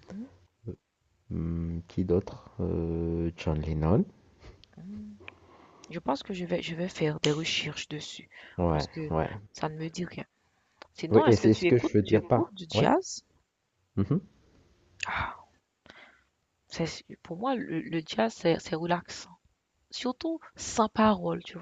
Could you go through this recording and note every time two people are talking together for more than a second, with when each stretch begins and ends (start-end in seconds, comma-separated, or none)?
11.1-12.9